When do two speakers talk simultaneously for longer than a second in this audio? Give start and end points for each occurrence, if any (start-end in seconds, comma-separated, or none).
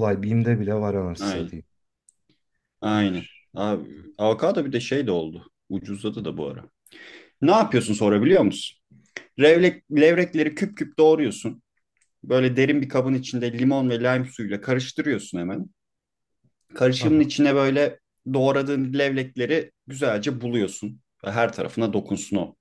none